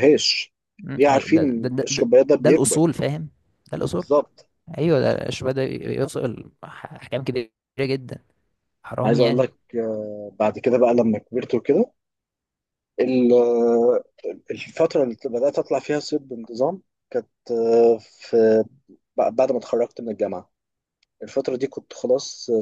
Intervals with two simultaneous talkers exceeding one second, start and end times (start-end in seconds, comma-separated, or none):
0.9-2.8